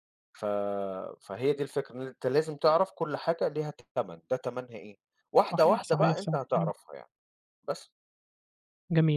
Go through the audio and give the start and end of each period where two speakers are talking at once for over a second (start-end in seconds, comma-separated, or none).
5.5-6.7